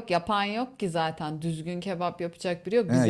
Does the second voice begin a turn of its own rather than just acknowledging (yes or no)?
yes